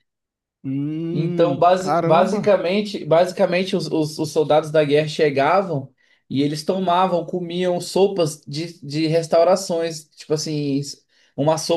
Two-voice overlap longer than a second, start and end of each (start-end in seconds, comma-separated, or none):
1.1-2.5